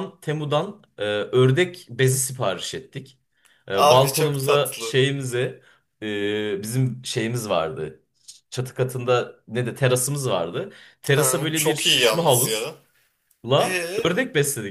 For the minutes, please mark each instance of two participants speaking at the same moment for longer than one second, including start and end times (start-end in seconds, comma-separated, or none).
3.7-5.0, 11.1-12.7